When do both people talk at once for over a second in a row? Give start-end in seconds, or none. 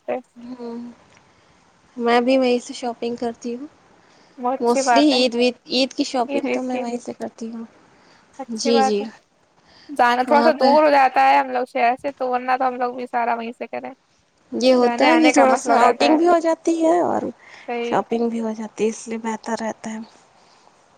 4.6-6.8, 14.8-16.2